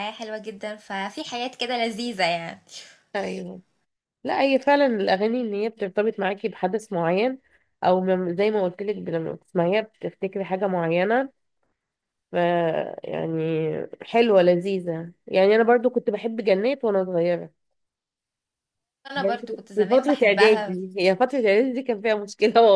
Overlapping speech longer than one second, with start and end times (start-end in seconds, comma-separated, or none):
19.1-20.7